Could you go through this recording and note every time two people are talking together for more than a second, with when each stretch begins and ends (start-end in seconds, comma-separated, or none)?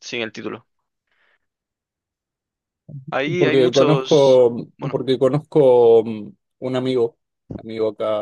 3.4-5.0